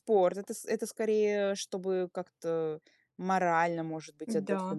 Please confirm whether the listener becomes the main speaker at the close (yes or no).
yes